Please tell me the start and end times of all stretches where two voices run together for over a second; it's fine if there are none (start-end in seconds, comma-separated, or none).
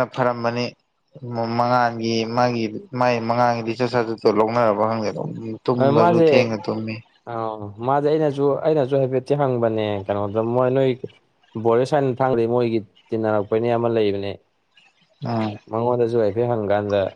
none